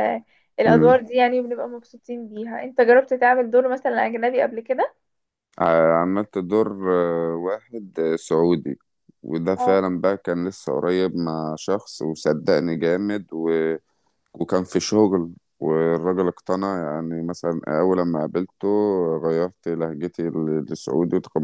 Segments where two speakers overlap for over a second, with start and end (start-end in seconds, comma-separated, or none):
none